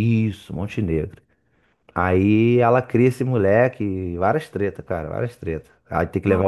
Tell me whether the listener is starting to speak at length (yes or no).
no